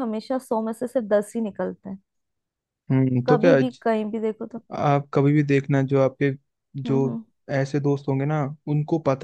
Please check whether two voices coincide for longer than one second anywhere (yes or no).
no